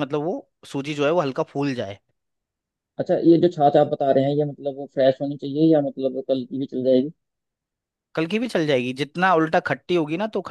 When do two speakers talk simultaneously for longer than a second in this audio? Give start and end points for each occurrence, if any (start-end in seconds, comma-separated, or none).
none